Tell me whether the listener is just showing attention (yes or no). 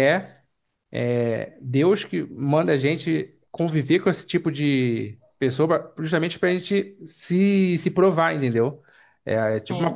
yes